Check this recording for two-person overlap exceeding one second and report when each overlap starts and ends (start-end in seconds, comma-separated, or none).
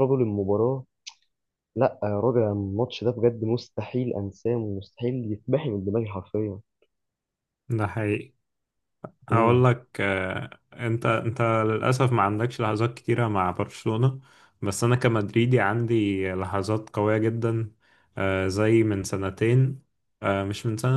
none